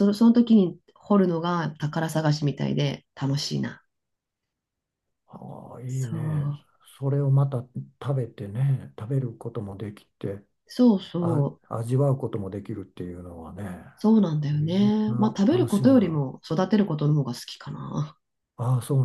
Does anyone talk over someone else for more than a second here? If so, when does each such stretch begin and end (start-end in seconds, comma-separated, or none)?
14.5-16.2